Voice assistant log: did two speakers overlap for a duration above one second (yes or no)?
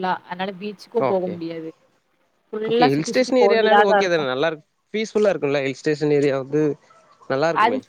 yes